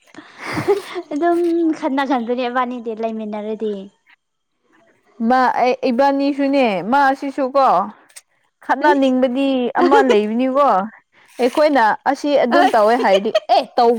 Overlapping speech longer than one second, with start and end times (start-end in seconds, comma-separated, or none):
none